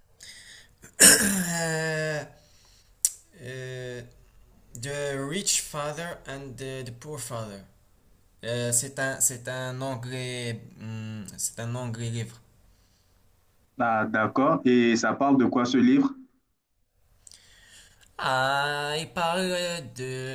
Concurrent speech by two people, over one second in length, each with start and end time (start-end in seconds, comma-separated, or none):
none